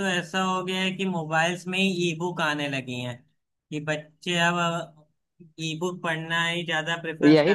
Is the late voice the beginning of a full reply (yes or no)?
yes